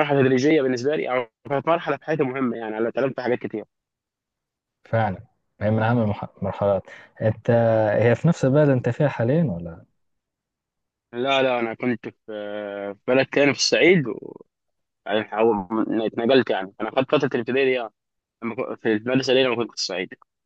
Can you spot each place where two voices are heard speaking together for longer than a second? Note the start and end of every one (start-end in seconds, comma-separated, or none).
none